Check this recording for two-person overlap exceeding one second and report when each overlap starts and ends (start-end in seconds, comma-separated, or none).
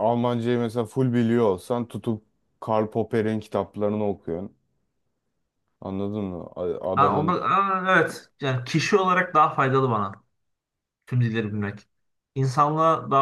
none